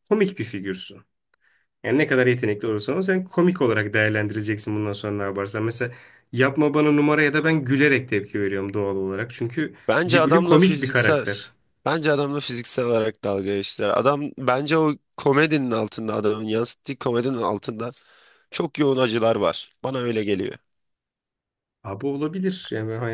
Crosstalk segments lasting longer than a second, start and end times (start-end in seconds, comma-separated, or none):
9.9-11.3